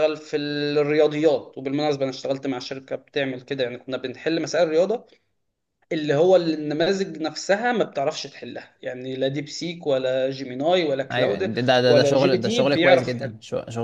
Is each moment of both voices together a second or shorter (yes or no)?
no